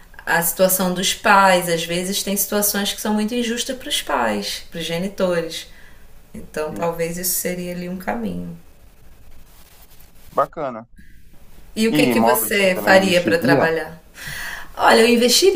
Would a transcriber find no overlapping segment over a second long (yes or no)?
no